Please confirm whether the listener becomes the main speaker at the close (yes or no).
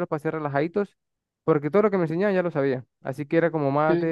no